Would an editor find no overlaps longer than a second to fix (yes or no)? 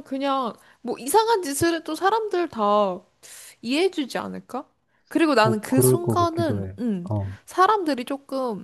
no